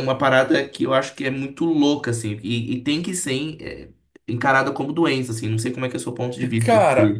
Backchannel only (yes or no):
no